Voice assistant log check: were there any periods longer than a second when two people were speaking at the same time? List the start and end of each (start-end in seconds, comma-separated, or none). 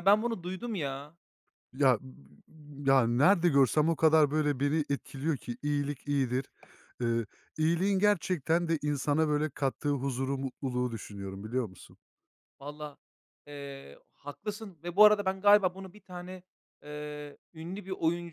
none